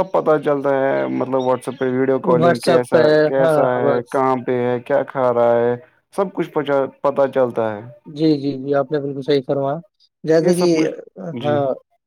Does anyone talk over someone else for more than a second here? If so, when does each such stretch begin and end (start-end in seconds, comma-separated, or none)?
2.4-4.1